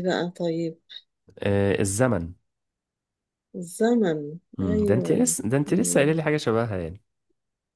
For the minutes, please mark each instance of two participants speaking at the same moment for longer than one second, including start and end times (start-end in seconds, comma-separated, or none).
4.6-6.2